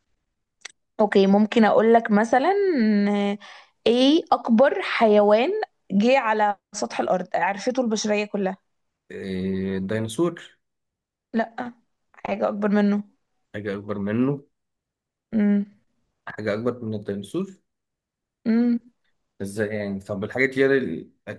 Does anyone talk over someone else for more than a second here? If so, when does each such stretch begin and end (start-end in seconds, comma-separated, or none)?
none